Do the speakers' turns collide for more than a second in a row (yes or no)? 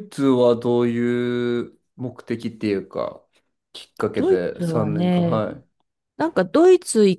yes